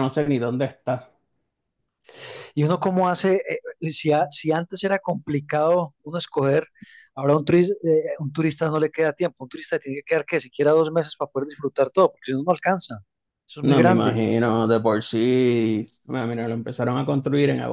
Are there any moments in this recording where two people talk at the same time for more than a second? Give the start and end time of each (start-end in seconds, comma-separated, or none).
none